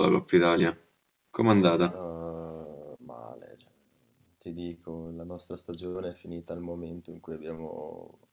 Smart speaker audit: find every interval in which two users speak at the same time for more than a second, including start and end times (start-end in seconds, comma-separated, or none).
none